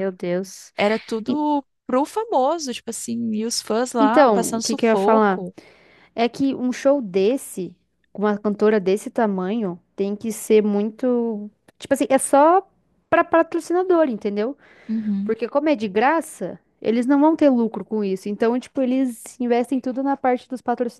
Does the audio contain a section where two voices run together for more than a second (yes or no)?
yes